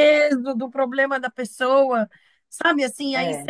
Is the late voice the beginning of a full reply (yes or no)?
no